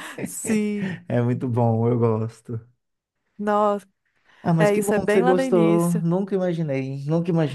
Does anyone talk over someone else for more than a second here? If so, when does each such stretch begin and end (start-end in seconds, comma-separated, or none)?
4.6-6.1